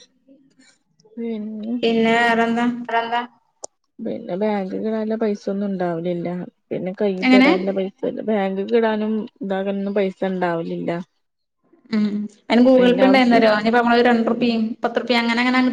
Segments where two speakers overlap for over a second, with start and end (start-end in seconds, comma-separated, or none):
none